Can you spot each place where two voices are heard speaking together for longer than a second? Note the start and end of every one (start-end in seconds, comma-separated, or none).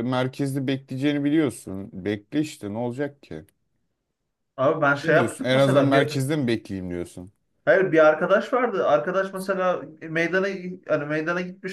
5.0-6.2